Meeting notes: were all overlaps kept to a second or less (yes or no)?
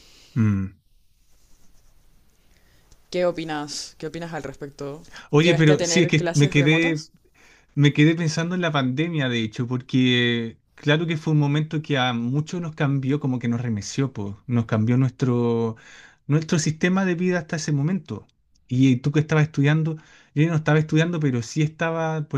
no